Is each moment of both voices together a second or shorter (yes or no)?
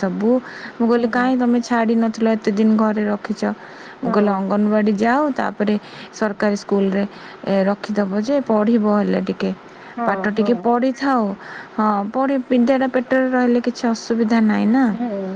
yes